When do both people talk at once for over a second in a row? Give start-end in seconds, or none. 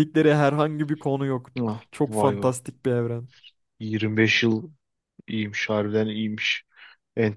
none